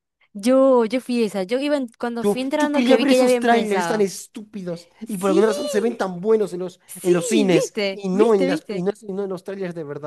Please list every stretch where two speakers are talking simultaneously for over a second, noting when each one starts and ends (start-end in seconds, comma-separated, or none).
2.2-4.1, 6.9-8.9